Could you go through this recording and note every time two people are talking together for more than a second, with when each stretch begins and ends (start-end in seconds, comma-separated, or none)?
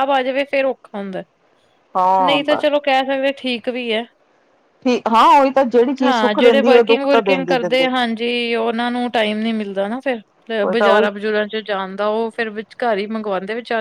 6.0-7.9